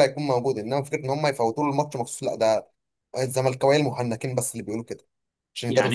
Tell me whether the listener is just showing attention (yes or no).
no